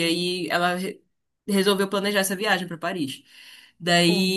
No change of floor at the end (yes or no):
yes